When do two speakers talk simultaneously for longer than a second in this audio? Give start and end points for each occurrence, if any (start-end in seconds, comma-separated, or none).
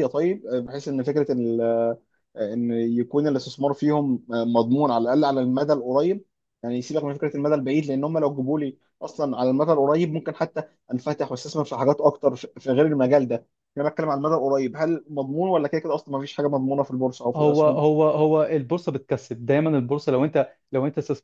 none